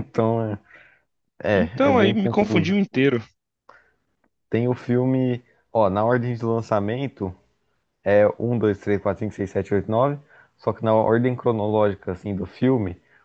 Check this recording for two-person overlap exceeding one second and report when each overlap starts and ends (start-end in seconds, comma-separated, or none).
1.5-2.8